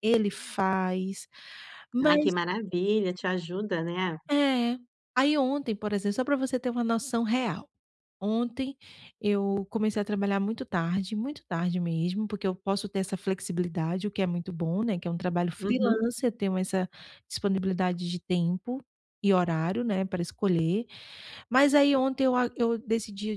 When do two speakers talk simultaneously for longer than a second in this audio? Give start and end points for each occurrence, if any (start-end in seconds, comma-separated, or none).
none